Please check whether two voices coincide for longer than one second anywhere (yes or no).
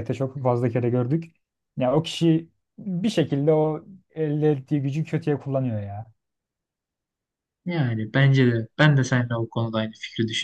no